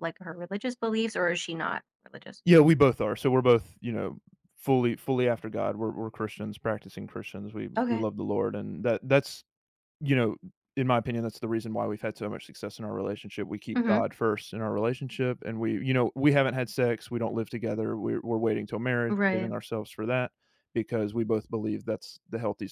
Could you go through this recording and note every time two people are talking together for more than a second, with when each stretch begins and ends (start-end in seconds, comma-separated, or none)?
none